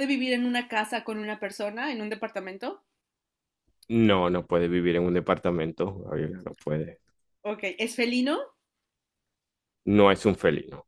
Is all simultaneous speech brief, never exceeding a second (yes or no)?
yes